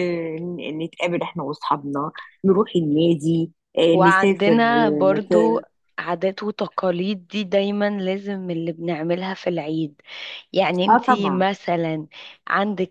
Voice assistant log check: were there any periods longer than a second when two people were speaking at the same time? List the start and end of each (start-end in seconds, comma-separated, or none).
3.9-5.6